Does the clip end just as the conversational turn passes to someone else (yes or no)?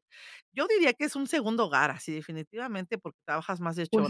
yes